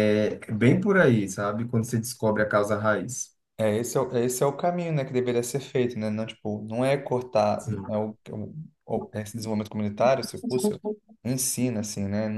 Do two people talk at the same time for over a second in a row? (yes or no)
no